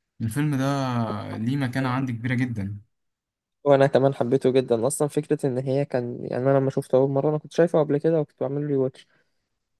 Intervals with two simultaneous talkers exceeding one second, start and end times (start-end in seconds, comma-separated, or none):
none